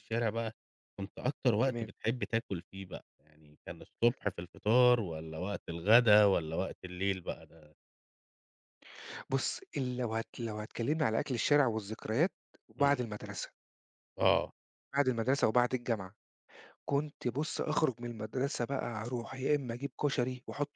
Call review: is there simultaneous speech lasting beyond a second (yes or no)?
no